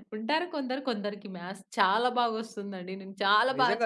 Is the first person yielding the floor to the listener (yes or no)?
yes